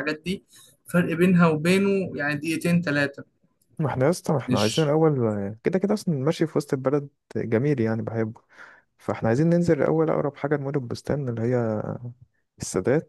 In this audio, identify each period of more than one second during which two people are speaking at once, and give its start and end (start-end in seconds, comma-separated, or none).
none